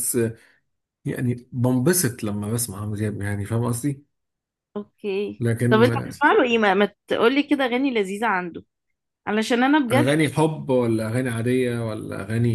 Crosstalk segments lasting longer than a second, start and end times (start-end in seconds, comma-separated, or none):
none